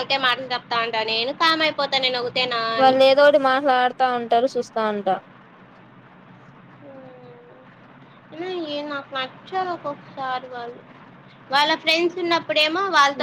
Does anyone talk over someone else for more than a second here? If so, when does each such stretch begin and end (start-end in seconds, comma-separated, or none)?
none